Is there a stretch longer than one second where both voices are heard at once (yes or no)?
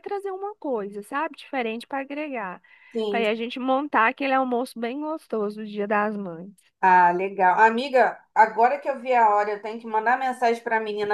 no